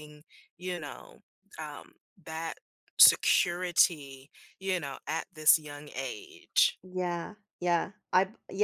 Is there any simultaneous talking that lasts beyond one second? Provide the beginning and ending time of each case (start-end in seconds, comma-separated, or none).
none